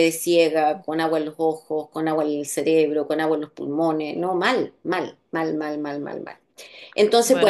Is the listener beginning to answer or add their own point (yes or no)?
yes